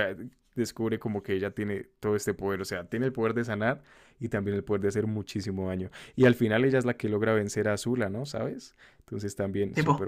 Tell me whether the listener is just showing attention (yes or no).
no